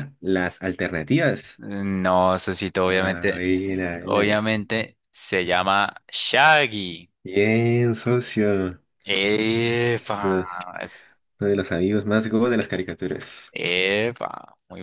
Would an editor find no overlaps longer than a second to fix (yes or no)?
no